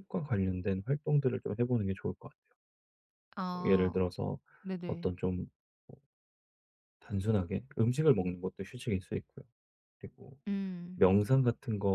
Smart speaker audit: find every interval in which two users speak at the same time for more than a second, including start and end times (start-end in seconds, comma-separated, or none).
none